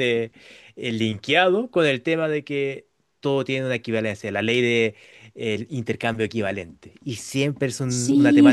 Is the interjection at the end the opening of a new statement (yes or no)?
yes